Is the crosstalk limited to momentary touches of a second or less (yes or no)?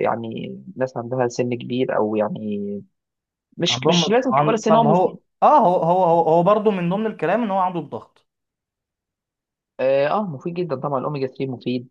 no